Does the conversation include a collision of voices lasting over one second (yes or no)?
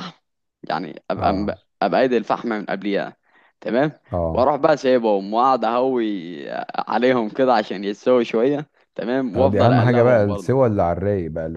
yes